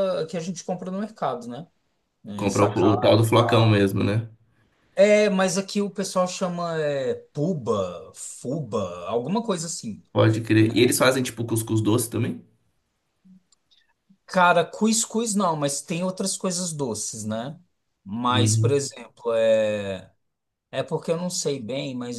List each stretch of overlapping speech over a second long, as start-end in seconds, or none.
2.3-3.9